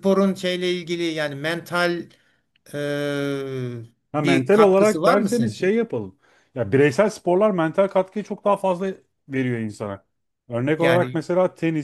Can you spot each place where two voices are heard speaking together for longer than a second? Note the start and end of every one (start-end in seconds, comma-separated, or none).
4.2-5.7